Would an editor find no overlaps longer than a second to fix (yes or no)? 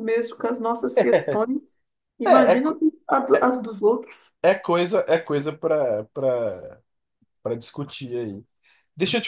yes